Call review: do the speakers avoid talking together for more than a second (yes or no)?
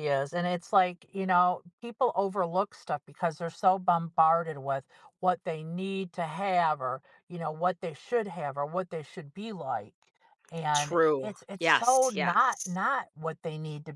no